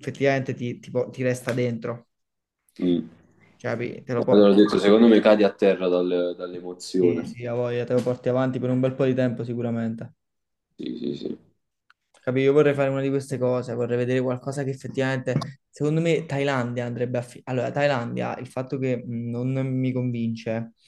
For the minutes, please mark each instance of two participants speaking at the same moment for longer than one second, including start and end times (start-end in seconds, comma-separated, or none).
none